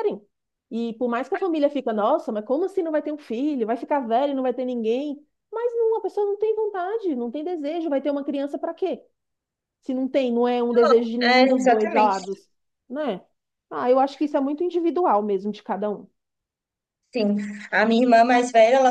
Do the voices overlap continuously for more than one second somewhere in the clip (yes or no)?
yes